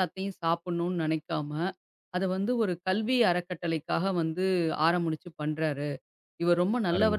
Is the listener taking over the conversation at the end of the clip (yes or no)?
no